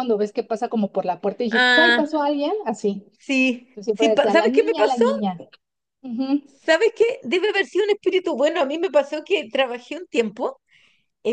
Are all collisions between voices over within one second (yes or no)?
no